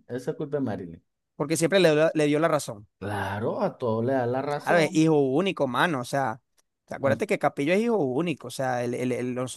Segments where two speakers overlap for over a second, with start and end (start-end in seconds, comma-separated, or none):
none